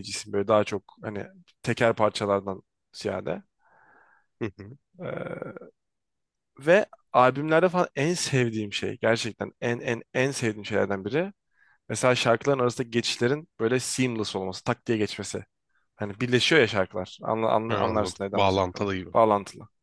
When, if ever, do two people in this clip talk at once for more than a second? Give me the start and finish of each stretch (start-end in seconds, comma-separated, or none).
17.7-19.1